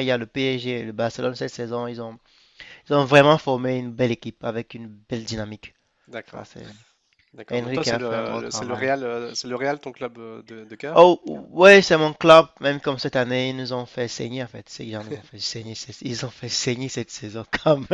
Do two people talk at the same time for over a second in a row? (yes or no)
yes